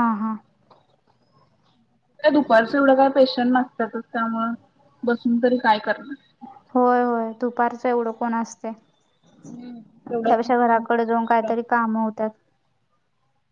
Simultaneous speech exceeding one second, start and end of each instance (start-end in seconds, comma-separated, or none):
10.1-11.7